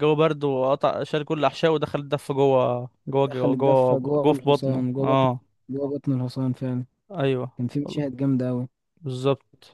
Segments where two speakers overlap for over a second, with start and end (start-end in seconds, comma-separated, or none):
3.3-5.3